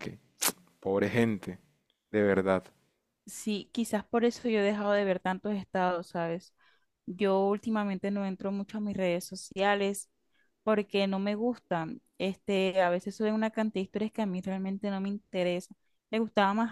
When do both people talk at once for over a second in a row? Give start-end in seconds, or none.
none